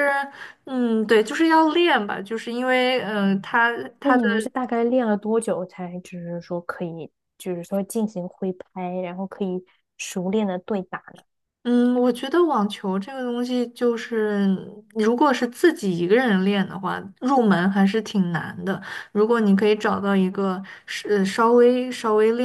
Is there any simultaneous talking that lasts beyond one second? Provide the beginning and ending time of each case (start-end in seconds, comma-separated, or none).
none